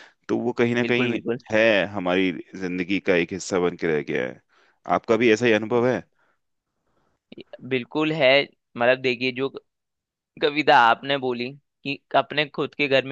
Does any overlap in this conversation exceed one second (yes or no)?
no